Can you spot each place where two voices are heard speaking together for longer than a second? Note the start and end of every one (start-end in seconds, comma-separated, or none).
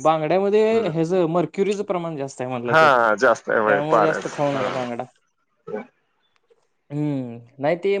2.7-4.6